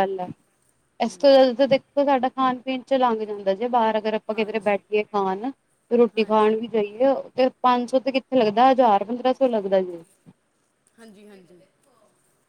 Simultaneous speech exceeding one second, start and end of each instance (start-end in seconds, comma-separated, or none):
none